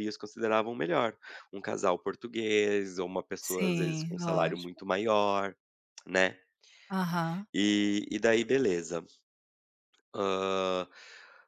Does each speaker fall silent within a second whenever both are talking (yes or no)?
no